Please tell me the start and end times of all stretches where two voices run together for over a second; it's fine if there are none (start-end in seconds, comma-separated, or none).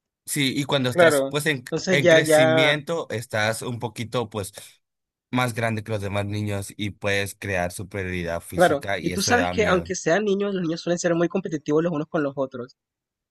0.9-2.8, 8.5-9.9